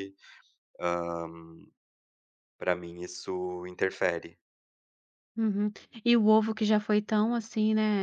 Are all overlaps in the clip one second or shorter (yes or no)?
yes